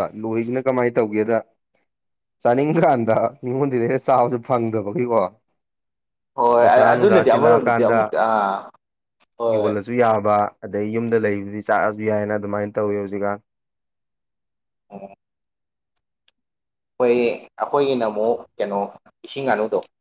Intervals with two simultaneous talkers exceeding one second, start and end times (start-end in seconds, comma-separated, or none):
6.6-8.0